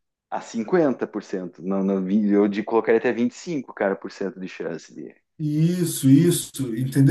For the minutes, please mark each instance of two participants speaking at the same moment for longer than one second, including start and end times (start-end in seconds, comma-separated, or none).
none